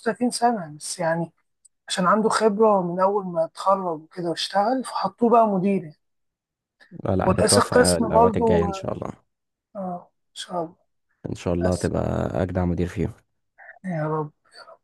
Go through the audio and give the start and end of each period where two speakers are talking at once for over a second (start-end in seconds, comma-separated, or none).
7.2-8.8